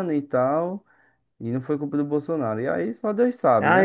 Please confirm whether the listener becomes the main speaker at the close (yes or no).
yes